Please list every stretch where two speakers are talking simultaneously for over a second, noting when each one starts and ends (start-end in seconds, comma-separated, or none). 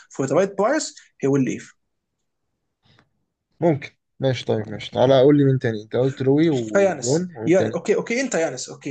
6.5-7.8